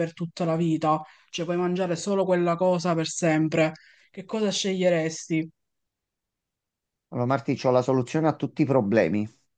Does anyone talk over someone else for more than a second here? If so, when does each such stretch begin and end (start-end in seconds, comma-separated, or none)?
none